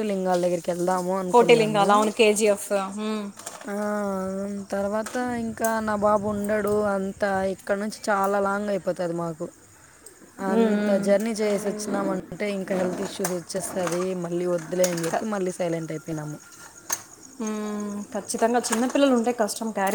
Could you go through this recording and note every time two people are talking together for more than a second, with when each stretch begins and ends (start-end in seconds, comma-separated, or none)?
none